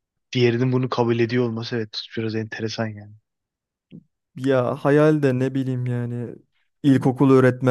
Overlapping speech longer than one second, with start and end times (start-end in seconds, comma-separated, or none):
none